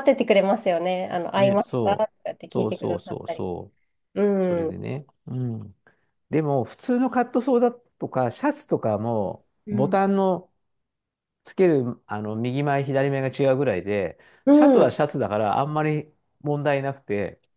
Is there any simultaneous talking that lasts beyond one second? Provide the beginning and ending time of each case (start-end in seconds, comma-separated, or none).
1.4-3.5